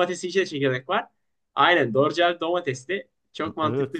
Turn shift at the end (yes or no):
yes